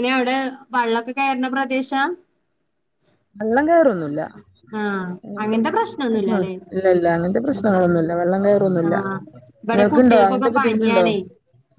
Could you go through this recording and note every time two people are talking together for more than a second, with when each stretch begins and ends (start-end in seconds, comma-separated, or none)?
9.7-11.0